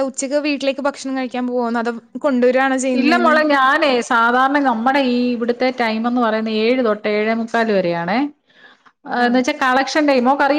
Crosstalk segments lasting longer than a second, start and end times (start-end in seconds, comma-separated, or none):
none